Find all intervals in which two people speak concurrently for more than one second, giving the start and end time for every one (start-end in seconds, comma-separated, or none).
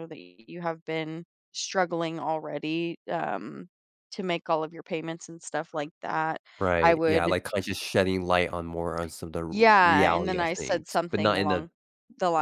9.5-11.7